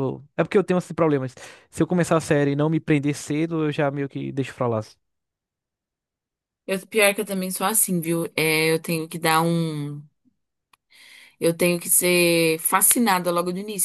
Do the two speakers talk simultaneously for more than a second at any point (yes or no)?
no